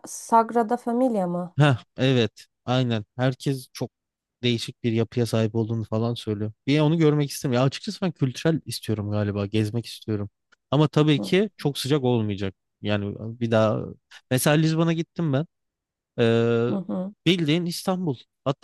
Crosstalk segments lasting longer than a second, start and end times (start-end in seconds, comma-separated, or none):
none